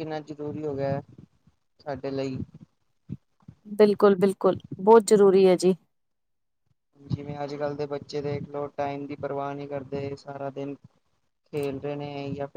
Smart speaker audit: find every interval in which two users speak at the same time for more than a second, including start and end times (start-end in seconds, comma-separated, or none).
none